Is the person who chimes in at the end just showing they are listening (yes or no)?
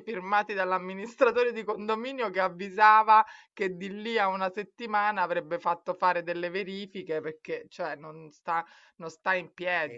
yes